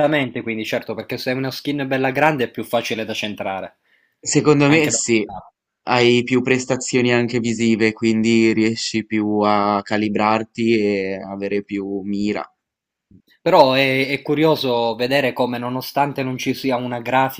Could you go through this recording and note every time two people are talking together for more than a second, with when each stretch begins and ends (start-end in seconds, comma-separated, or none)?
none